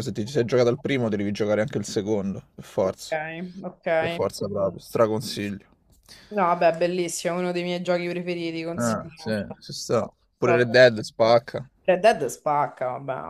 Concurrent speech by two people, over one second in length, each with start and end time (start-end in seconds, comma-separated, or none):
8.8-10.9